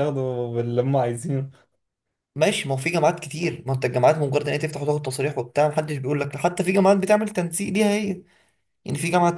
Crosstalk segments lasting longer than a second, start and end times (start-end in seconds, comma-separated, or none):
none